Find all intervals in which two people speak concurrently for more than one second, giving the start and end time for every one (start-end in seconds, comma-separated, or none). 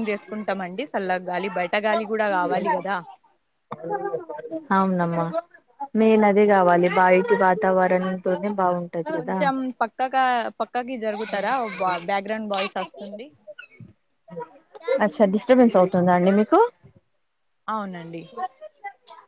none